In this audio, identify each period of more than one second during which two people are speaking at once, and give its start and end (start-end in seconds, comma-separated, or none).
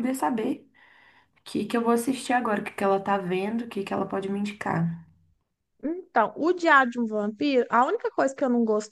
none